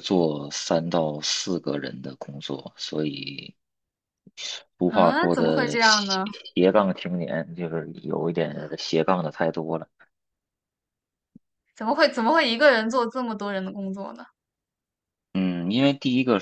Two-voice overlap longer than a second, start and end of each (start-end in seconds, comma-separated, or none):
4.8-6.2